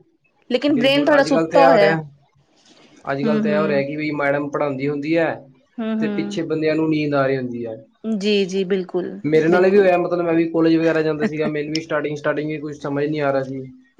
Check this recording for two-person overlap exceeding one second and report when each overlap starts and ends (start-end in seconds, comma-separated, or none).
0.7-2.0